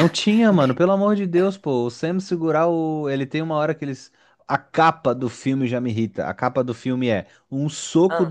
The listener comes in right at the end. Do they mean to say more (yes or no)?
no